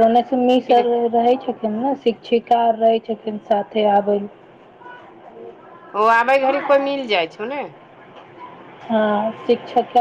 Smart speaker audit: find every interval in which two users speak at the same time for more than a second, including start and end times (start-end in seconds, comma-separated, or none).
none